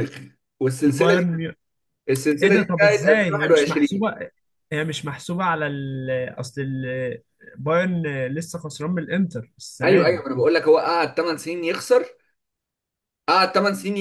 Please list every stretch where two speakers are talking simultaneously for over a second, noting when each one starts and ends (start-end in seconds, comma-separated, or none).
2.4-4.1